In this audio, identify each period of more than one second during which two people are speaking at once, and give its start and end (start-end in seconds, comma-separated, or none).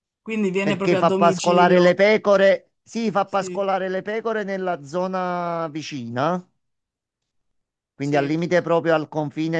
0.6-2.0